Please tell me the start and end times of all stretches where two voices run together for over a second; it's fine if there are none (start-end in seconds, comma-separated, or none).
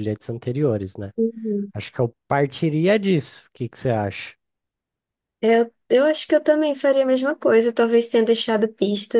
none